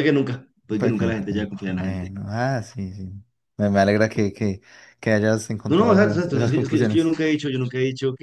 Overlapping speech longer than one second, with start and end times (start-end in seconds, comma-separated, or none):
0.8-2.1, 5.7-7.2